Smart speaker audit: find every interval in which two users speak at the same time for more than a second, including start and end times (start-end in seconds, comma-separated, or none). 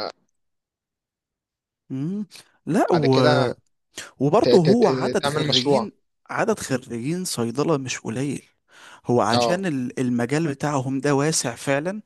4.4-5.9